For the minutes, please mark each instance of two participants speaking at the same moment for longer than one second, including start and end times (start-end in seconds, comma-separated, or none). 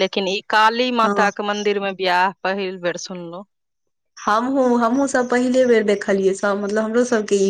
none